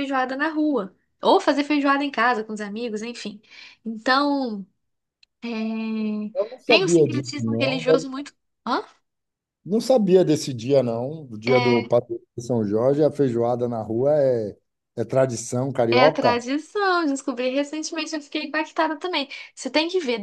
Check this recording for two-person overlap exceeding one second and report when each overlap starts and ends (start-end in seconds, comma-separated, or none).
6.7-8.1